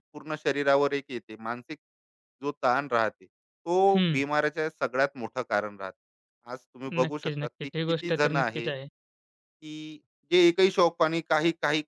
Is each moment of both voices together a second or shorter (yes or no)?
no